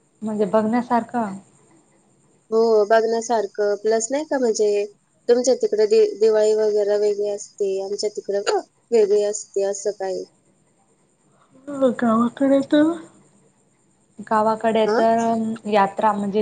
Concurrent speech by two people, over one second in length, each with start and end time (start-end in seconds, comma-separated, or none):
none